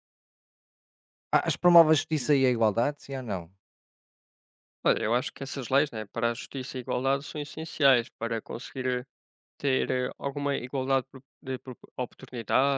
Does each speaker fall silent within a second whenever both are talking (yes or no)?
yes